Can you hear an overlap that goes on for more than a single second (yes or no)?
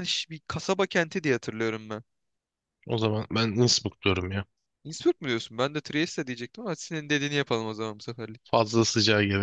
no